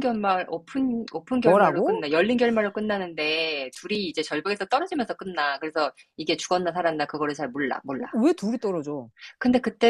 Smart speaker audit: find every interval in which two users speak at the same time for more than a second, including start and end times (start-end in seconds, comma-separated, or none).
none